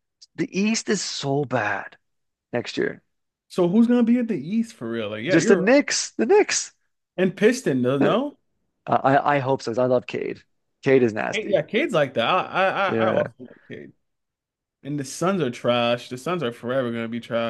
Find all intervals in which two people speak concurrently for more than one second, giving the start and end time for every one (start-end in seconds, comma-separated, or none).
none